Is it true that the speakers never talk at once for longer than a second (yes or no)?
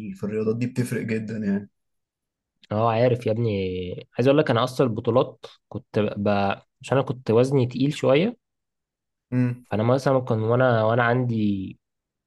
yes